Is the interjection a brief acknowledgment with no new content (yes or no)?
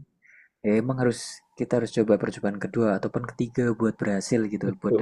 no